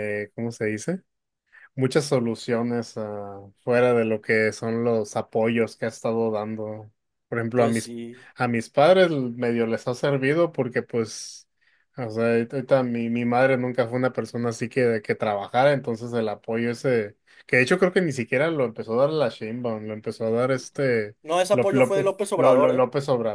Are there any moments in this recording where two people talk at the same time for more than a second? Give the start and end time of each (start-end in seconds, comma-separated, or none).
21.5-22.9